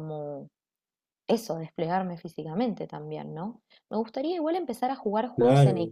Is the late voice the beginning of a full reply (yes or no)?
no